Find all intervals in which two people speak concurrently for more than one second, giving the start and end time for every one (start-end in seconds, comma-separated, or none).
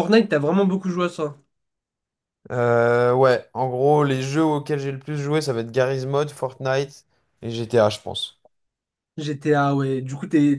none